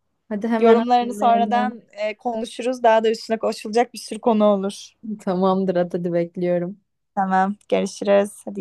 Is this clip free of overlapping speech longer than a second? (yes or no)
no